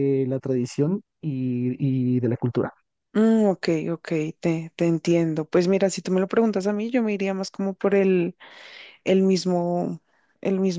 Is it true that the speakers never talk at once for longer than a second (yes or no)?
yes